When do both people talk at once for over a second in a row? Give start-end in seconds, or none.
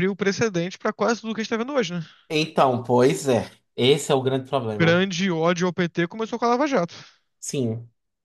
none